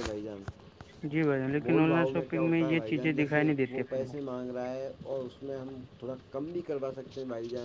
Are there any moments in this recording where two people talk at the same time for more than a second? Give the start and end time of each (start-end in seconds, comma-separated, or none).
1.6-4.1